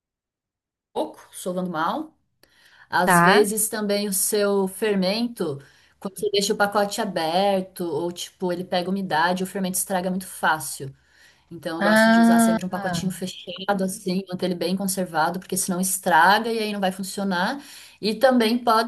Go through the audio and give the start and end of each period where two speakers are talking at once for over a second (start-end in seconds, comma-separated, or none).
11.8-13.1